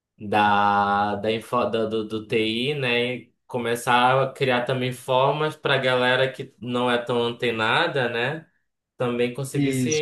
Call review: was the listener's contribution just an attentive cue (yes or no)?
yes